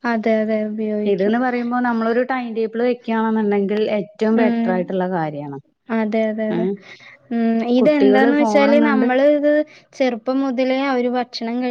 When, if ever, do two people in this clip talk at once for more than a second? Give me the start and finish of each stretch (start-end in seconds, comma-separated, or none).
7.8-9.1